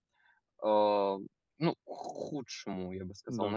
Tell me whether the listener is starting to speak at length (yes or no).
no